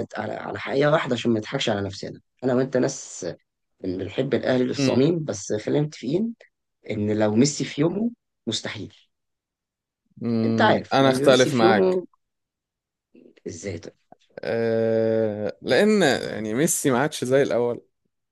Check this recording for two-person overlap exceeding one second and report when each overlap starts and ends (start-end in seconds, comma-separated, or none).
10.4-12.0